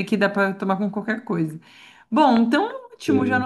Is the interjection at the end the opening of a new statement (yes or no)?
no